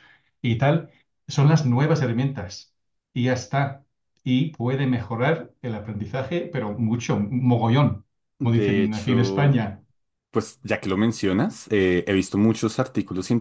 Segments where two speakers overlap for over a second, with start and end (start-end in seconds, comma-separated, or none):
8.4-9.7